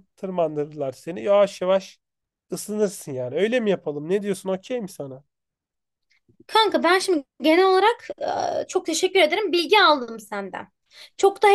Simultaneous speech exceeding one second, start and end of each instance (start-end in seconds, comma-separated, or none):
none